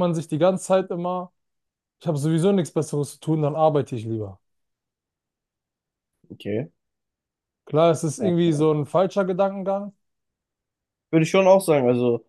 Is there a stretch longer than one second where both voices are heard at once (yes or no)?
no